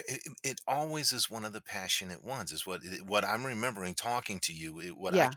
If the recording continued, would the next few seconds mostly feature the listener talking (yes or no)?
no